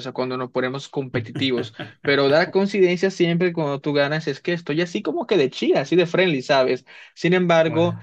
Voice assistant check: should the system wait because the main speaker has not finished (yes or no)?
yes